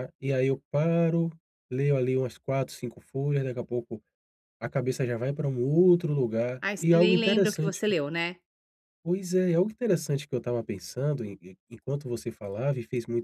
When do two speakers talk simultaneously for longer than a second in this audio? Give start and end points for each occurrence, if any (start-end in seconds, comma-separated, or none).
6.6-7.8